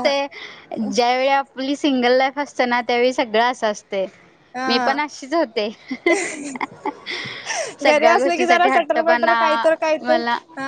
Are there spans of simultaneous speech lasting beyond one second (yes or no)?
yes